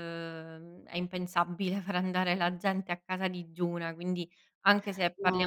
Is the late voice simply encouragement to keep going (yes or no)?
yes